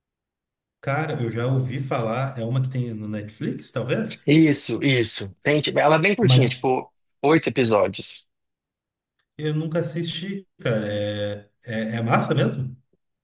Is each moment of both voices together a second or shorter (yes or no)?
yes